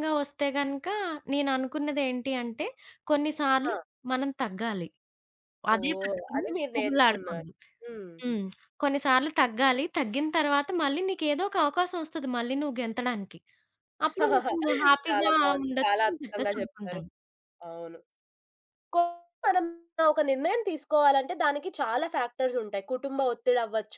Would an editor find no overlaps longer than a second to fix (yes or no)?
no